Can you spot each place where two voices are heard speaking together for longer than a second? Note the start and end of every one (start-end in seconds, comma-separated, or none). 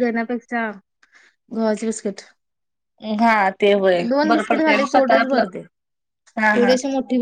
4.1-5.4